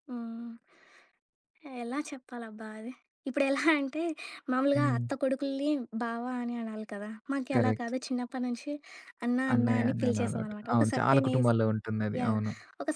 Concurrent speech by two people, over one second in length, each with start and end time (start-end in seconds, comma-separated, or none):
9.5-11.5